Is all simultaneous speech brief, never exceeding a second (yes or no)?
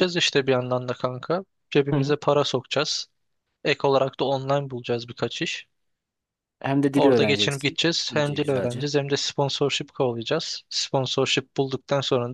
no